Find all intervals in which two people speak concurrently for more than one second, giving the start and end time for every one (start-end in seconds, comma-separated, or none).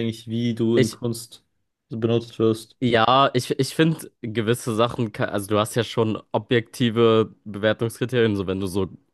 none